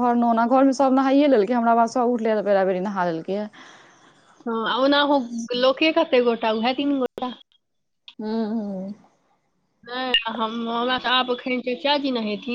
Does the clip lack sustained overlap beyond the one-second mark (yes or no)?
yes